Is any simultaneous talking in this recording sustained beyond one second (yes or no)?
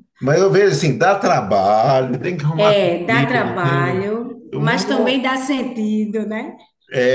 yes